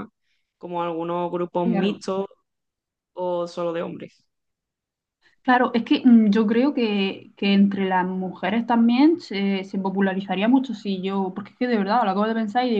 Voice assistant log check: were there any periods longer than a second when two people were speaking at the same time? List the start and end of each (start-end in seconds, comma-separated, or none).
none